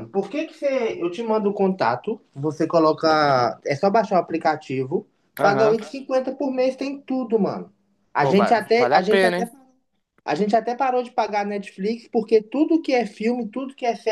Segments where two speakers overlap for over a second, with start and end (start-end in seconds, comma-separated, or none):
8.2-9.5